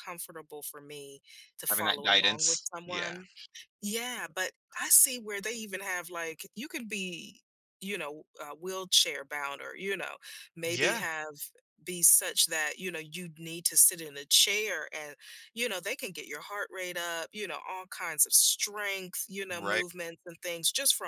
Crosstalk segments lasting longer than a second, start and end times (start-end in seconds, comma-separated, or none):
1.7-3.2